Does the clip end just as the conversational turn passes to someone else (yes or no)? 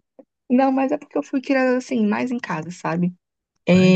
no